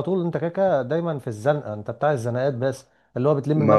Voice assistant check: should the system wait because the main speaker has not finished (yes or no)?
yes